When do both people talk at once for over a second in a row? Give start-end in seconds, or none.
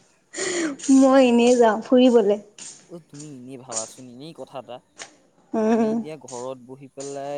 none